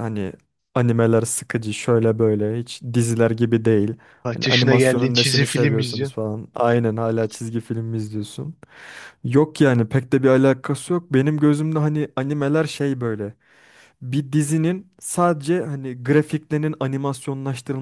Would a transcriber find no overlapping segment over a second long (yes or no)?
no